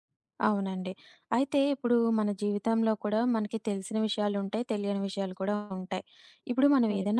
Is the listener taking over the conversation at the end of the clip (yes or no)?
no